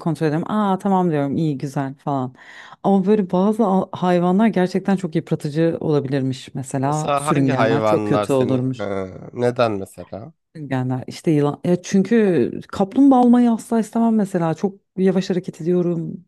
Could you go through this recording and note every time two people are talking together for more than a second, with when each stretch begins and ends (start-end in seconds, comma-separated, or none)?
6.8-8.9